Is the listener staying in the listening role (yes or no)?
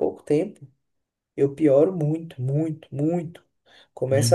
yes